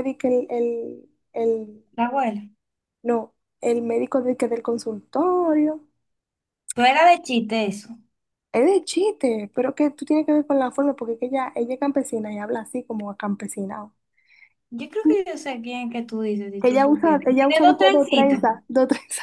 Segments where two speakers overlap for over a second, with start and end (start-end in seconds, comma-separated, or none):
16.6-18.4